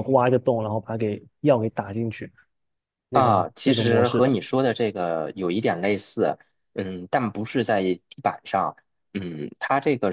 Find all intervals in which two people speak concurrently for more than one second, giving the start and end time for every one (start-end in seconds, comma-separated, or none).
3.1-4.3